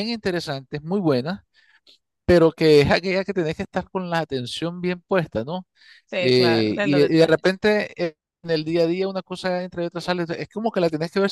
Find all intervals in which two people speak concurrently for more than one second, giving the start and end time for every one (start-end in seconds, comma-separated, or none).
6.2-7.6